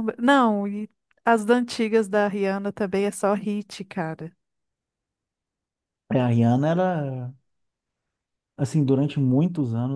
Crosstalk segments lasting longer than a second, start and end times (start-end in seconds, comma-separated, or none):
none